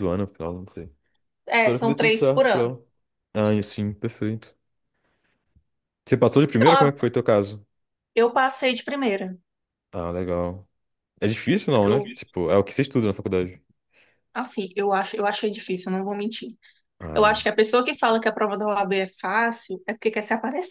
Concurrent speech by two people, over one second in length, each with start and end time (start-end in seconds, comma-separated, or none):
1.5-2.7